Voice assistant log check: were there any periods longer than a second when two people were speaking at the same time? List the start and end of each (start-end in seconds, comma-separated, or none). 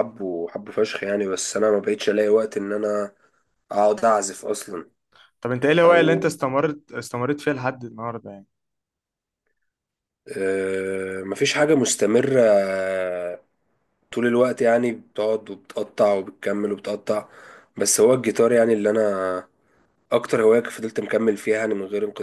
none